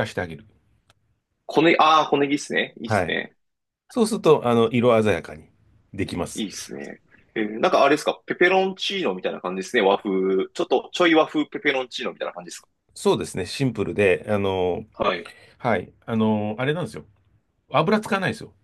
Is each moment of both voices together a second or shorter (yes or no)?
yes